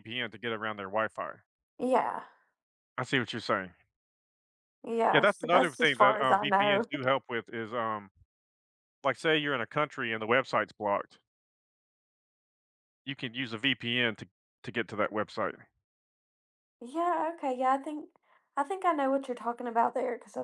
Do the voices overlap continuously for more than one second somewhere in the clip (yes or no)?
yes